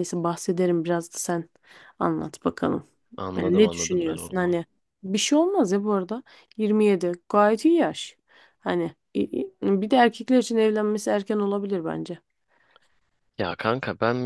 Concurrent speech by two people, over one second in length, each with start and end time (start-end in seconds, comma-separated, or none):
3.4-4.6